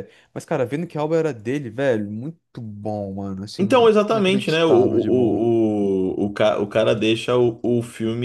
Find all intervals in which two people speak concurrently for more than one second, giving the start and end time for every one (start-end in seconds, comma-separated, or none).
3.6-5.5